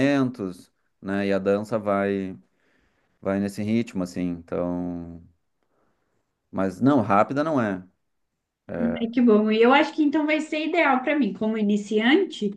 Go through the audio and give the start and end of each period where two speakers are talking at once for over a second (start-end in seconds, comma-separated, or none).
none